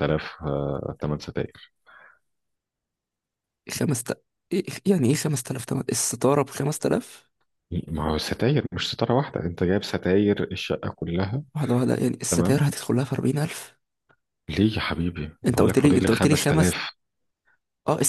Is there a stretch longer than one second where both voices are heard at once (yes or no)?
yes